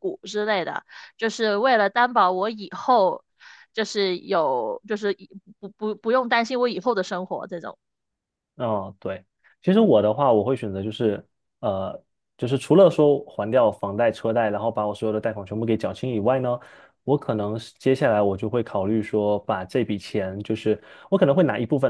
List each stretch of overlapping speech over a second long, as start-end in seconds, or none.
none